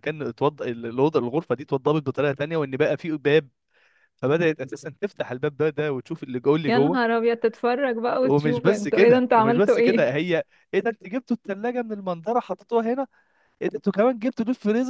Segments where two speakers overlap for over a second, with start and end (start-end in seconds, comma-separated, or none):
8.2-10.2